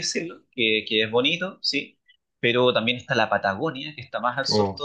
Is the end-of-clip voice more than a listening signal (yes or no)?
no